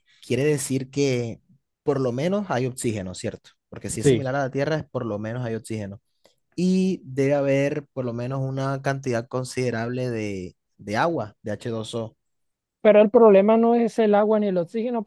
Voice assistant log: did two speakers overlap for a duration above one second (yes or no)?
no